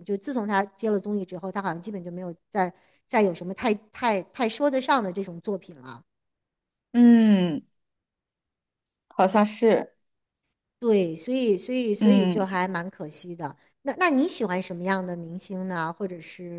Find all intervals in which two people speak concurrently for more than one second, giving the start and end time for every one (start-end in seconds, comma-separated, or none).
none